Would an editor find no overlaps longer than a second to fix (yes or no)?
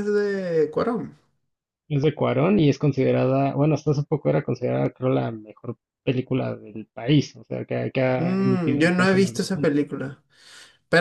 no